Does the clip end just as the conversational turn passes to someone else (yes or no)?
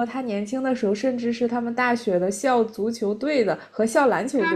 yes